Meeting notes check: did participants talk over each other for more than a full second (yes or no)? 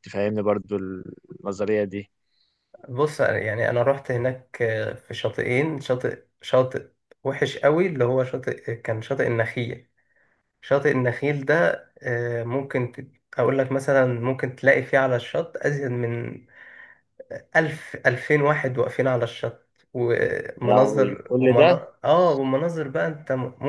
yes